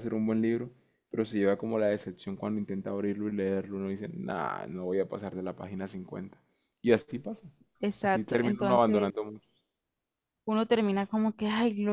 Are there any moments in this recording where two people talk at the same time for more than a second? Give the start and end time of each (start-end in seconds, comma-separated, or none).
8.0-9.3